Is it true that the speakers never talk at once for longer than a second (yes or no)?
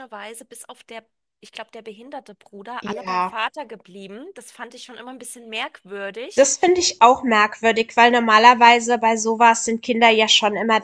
yes